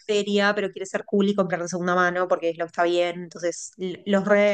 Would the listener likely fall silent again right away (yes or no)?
yes